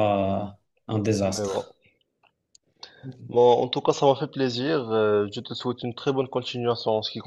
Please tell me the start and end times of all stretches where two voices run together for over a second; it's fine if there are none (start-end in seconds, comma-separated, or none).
none